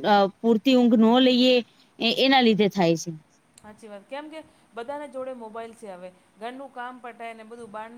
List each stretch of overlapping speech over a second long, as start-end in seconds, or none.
none